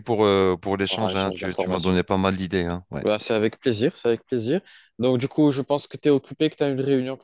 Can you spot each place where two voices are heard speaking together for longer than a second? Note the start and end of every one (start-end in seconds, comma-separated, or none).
0.8-2.0